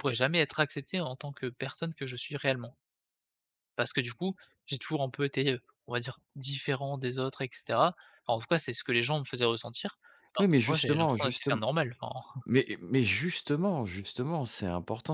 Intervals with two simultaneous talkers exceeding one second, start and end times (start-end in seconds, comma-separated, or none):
10.4-11.6